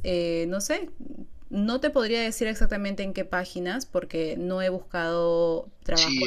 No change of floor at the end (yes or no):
no